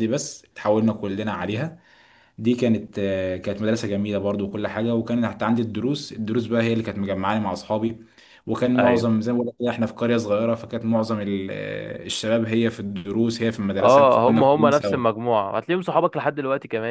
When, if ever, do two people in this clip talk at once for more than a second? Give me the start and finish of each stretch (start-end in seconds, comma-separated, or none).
13.8-15.0